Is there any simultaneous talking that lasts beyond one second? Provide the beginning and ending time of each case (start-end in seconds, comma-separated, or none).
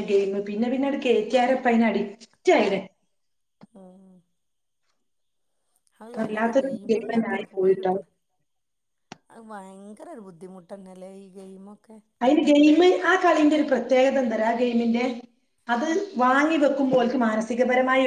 6.2-7.9